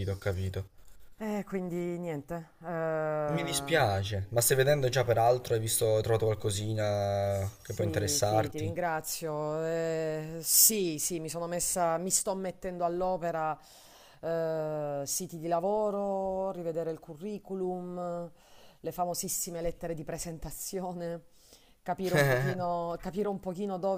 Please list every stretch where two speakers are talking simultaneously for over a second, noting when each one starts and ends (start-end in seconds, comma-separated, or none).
7.3-8.7